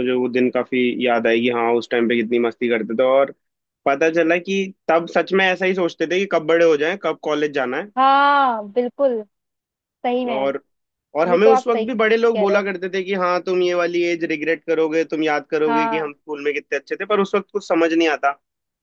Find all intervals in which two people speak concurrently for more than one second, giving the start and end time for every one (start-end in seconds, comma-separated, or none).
11.3-12.6